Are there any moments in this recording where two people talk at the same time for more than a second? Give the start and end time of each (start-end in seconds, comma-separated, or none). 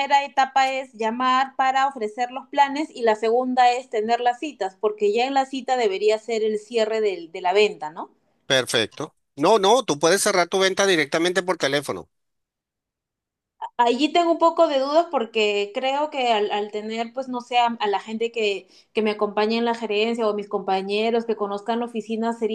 none